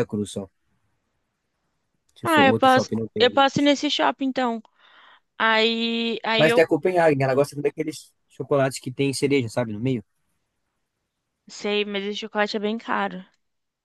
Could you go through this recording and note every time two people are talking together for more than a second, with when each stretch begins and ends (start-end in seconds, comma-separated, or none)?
2.2-3.7